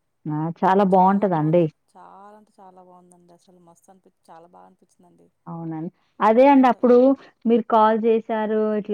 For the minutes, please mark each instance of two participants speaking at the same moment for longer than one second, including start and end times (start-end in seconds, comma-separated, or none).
none